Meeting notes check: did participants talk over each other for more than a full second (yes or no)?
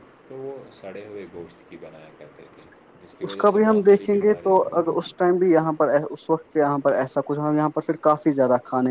yes